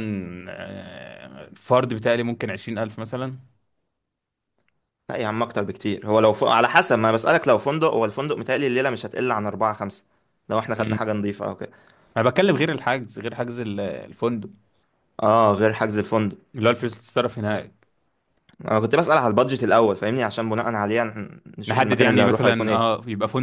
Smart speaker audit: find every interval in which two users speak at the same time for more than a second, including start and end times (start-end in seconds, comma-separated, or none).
21.7-22.9